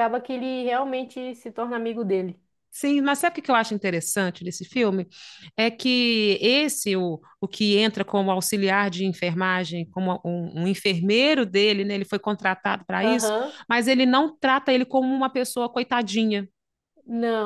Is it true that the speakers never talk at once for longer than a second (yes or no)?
yes